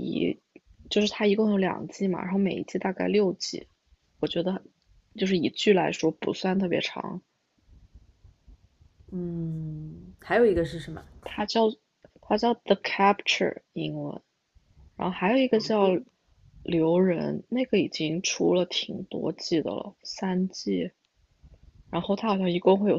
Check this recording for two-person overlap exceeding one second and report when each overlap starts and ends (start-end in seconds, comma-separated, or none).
none